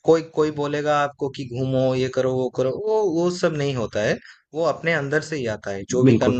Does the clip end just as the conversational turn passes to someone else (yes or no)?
no